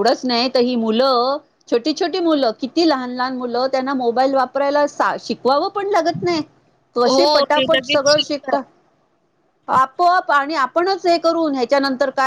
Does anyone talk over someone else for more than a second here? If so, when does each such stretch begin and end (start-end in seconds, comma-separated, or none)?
7.1-8.6